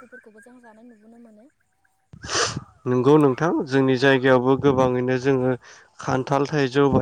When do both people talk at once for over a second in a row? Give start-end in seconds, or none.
none